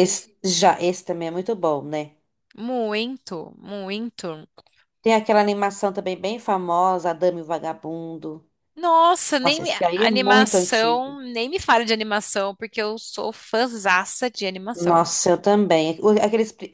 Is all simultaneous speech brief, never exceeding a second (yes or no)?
no